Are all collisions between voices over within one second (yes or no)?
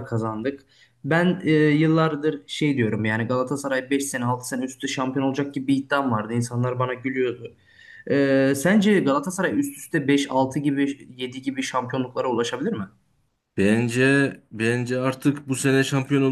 yes